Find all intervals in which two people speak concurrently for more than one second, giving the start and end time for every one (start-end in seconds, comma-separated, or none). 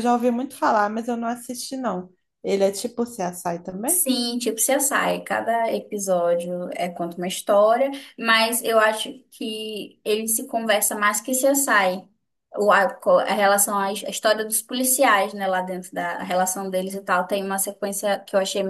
none